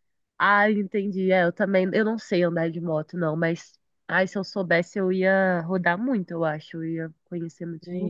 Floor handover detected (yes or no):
yes